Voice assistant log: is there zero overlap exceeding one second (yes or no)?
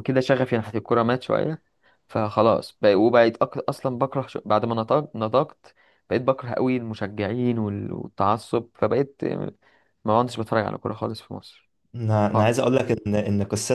yes